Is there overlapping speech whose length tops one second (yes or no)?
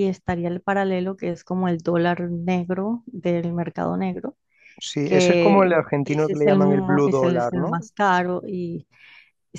yes